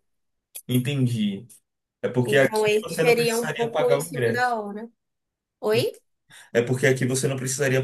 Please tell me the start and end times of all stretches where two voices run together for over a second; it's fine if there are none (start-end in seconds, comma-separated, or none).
2.2-4.6